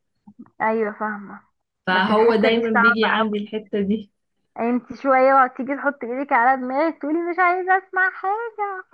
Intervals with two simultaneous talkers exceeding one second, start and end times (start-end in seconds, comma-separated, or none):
1.9-3.5